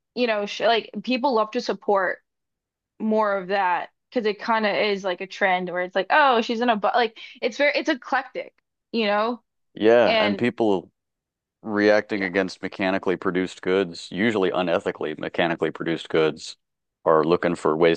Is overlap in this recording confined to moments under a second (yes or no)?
yes